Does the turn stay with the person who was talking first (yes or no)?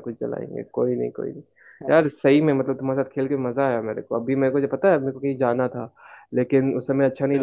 yes